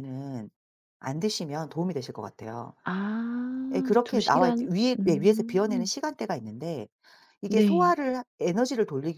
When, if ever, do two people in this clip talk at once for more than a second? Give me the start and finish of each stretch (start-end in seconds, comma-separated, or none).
3.7-5.9